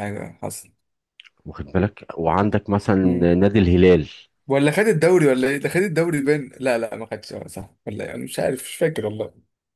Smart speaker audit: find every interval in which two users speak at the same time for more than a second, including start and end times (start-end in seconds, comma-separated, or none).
none